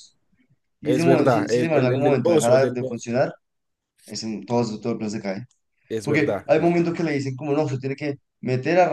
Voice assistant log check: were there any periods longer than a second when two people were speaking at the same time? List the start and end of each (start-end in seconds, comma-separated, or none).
0.8-3.0